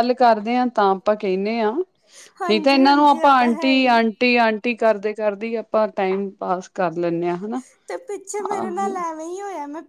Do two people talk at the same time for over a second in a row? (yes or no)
yes